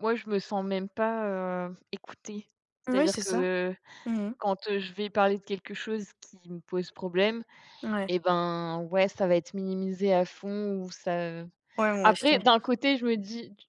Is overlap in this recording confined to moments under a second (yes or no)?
yes